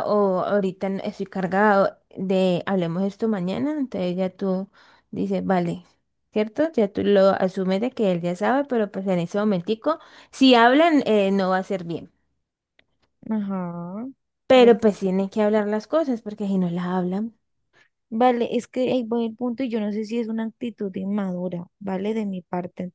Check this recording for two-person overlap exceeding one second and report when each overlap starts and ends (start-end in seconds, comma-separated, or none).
none